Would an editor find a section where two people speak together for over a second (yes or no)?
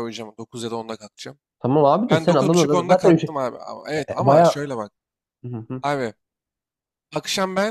yes